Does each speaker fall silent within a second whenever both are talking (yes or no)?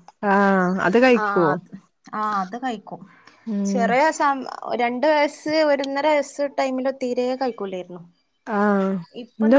yes